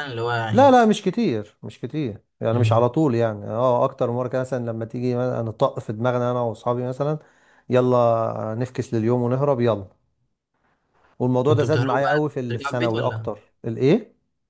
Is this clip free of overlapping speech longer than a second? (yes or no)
no